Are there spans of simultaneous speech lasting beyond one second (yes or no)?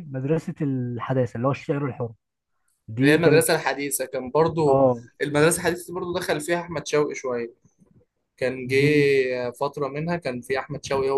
no